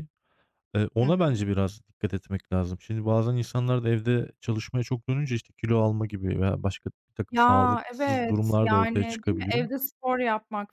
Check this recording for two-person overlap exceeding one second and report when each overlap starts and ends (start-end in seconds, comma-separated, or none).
7.3-9.7